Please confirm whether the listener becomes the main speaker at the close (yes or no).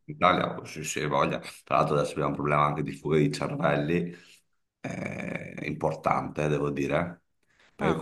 no